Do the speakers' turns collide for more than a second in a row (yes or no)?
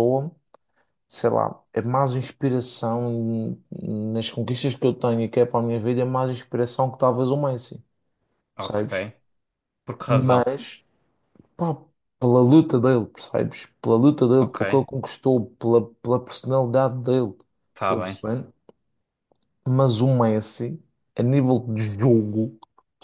no